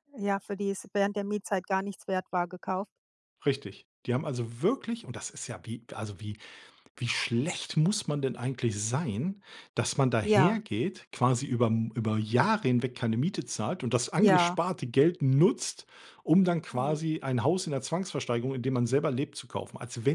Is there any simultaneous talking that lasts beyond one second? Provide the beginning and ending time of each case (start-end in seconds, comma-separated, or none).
none